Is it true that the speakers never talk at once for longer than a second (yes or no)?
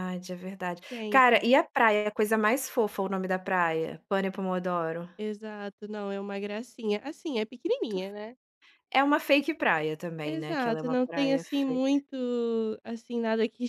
no